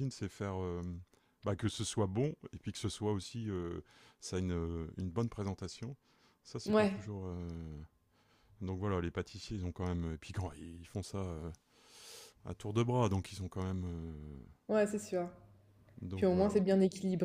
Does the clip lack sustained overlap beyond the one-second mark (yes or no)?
yes